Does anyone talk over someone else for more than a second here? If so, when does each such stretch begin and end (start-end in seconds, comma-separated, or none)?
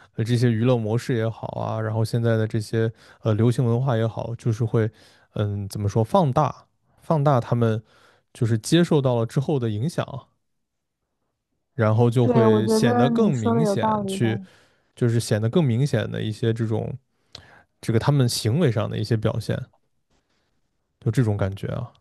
12.2-14.3